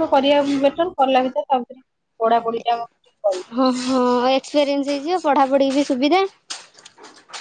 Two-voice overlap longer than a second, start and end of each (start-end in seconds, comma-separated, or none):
none